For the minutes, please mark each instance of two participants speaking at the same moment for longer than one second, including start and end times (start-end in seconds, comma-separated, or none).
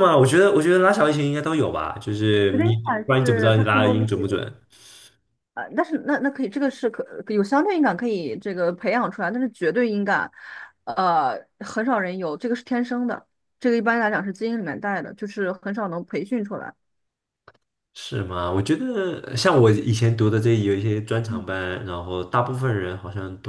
2.5-4.5